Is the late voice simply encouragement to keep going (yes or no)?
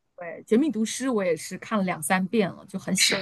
no